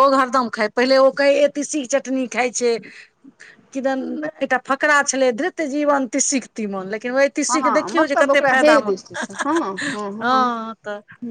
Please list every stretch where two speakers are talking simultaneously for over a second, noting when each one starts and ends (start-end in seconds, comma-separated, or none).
7.5-8.9